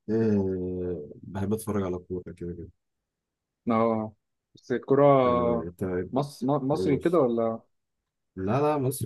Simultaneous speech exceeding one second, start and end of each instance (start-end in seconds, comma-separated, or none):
none